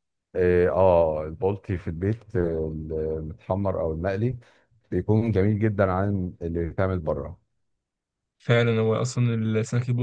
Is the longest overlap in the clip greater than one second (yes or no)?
no